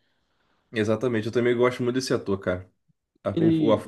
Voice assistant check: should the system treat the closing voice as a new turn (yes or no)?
no